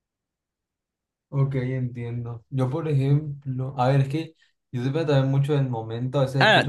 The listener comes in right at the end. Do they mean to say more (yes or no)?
yes